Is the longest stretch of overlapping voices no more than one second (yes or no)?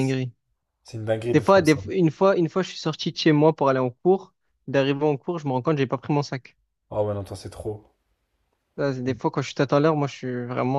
yes